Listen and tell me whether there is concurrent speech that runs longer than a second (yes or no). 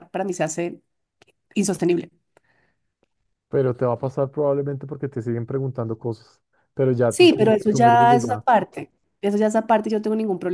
yes